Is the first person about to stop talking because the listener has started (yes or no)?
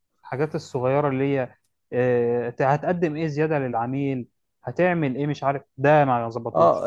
yes